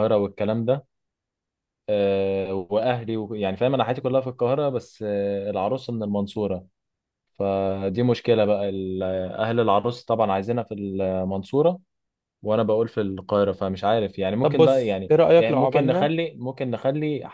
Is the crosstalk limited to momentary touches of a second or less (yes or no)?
no